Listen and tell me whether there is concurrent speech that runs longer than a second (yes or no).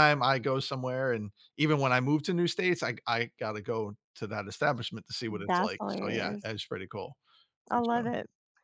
yes